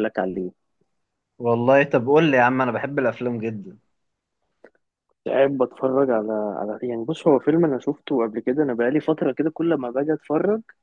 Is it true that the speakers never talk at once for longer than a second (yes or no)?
yes